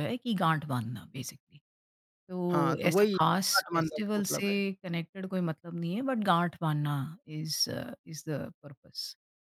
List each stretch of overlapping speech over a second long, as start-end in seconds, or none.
2.5-4.5